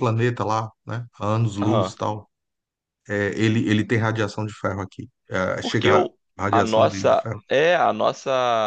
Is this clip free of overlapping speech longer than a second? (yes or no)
no